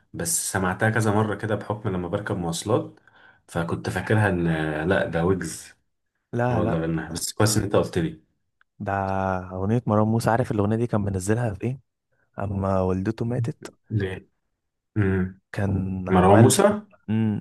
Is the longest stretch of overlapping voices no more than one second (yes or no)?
yes